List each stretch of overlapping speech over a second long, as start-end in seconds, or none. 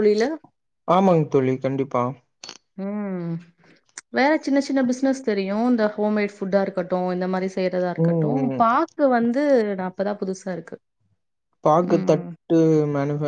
none